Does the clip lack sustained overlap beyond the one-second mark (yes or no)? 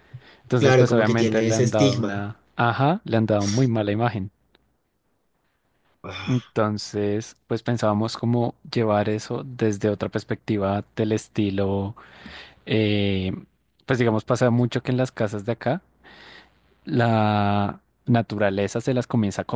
no